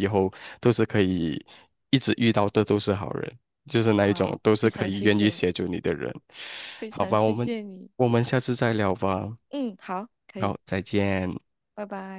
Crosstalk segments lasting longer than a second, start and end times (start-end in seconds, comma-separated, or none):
3.9-5.5